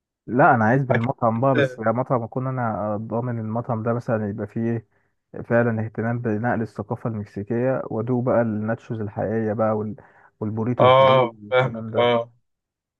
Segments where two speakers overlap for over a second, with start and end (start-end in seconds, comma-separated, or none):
10.8-12.1